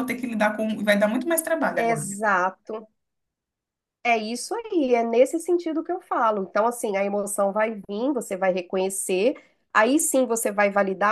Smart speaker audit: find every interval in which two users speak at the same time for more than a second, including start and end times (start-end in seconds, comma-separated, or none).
none